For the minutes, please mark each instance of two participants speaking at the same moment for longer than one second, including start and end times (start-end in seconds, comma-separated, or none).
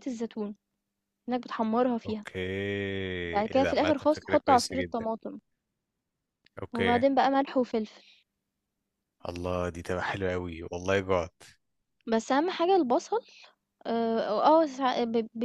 3.5-5.0